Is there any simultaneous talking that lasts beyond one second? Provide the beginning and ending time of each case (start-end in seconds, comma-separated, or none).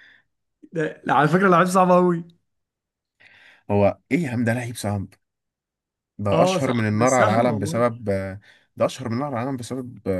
6.3-7.9